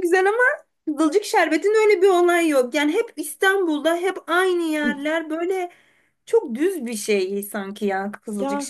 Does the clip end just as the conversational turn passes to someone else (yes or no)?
yes